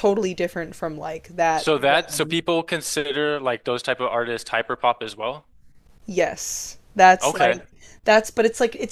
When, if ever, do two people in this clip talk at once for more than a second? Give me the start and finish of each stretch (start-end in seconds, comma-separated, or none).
none